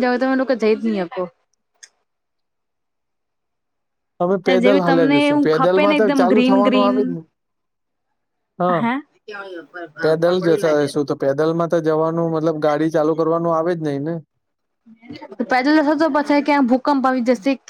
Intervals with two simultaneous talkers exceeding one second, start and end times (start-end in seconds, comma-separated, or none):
4.6-7.0